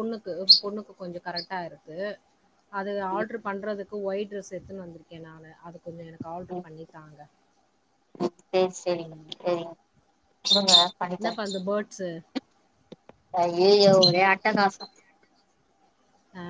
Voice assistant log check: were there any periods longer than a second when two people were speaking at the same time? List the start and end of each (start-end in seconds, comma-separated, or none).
none